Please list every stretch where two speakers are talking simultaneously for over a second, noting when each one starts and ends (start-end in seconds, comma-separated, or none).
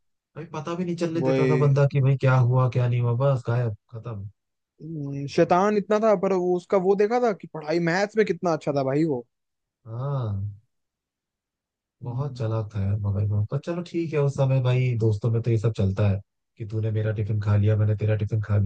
none